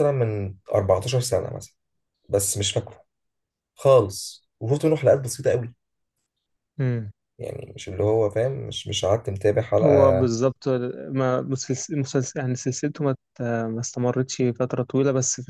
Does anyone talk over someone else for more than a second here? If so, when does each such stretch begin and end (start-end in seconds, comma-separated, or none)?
none